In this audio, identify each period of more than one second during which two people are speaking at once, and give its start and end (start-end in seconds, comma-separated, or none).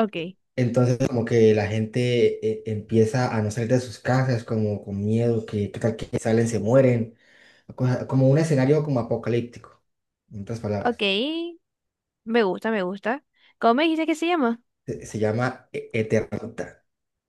none